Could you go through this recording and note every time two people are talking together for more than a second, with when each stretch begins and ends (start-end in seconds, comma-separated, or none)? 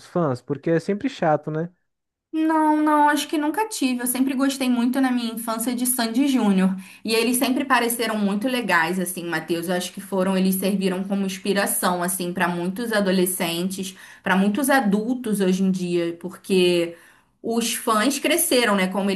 none